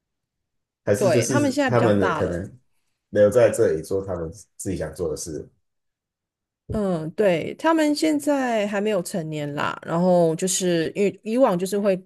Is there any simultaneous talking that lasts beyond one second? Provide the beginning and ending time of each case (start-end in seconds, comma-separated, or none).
0.9-2.5